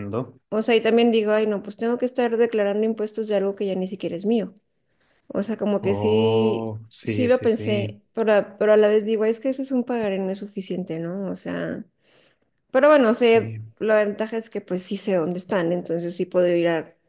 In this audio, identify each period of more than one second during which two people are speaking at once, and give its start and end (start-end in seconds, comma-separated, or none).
5.8-8.0